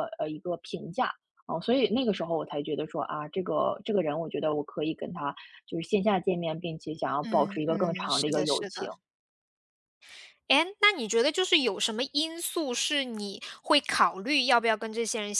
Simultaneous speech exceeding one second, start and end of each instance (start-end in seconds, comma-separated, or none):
7.2-8.9